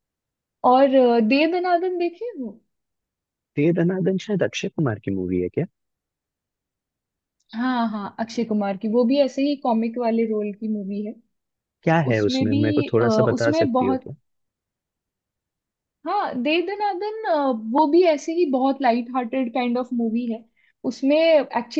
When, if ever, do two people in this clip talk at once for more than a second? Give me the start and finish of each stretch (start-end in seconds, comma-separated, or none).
12.1-14.1